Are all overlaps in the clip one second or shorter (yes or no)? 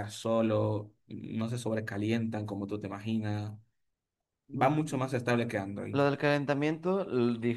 yes